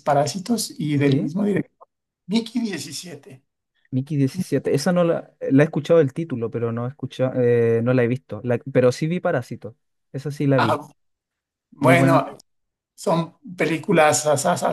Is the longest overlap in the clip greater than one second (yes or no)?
no